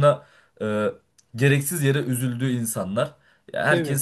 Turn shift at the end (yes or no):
no